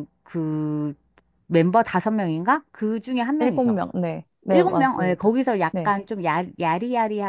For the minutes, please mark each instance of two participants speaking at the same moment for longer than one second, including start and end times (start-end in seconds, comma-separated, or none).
4.5-6.0